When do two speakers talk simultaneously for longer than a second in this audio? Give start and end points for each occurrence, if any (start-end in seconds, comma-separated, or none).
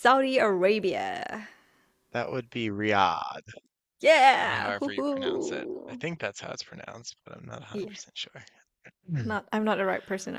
4.3-6.0